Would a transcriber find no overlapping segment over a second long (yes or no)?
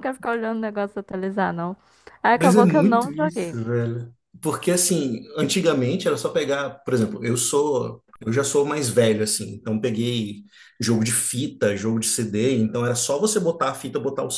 no